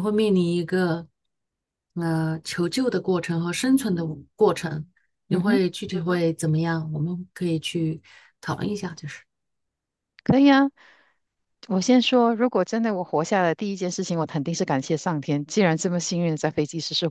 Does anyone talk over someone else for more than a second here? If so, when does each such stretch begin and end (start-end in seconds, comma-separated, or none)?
none